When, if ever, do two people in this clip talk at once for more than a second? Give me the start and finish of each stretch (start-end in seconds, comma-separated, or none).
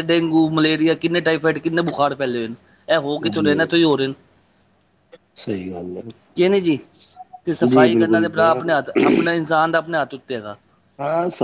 7.7-9.1